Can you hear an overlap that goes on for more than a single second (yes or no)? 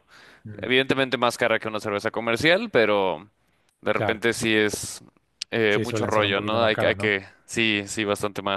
yes